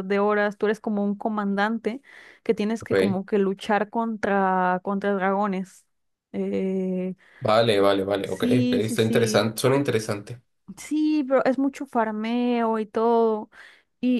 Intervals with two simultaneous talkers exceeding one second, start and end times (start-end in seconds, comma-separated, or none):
8.2-9.5